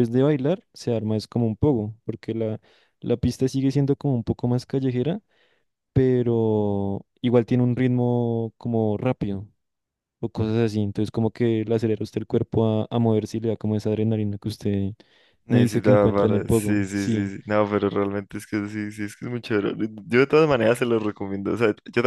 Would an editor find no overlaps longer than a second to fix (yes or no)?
no